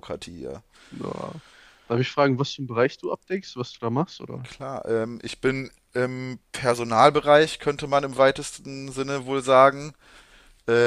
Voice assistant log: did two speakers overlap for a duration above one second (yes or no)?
no